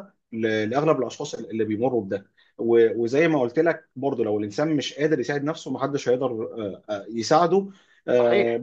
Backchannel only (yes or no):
yes